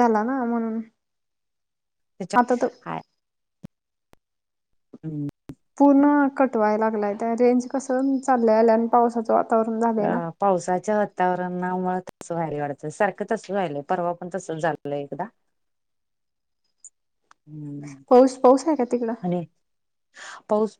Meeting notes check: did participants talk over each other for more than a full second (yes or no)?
no